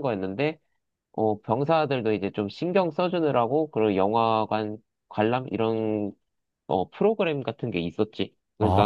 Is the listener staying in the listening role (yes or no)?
no